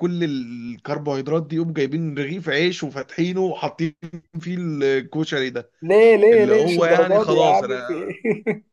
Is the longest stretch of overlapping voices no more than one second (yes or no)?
no